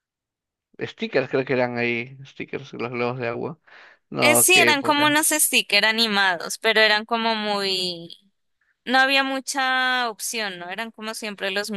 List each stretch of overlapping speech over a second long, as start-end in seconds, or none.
4.2-5.5